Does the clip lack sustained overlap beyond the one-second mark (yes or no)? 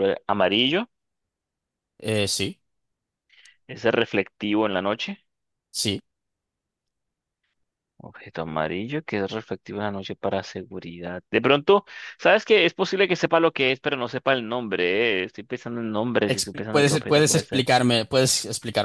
no